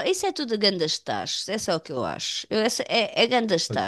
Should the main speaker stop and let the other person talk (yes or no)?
no